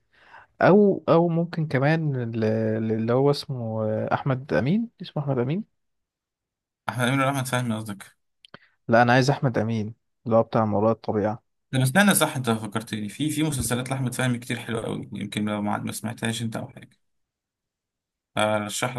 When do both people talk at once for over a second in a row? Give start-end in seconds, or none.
none